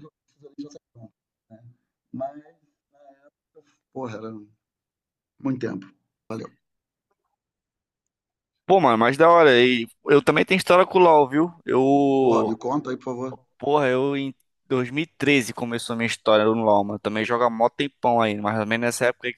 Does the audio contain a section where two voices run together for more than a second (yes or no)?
no